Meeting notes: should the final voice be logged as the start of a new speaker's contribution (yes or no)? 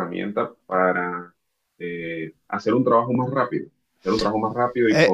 yes